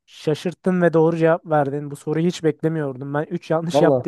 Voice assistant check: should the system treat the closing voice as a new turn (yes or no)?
no